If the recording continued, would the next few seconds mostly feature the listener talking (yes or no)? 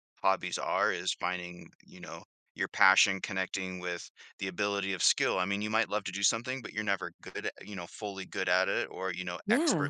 no